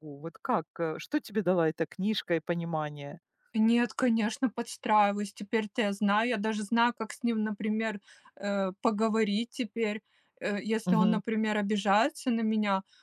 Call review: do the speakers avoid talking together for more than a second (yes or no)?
yes